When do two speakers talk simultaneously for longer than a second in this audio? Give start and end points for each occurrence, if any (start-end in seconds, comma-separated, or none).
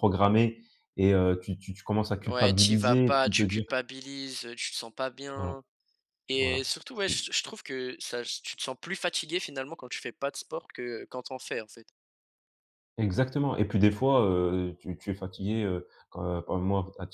2.2-3.6